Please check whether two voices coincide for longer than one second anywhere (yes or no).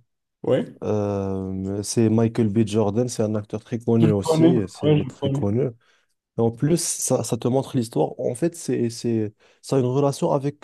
yes